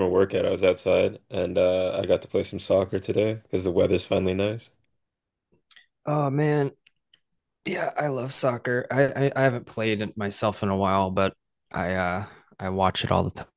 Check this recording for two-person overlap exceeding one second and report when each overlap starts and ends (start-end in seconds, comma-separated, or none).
none